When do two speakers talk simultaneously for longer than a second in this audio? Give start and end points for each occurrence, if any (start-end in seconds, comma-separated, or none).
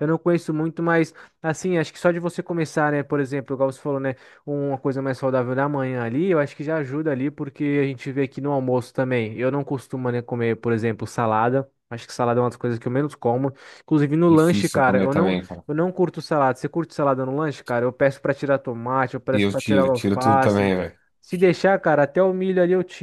14.3-15.6, 19.3-20.8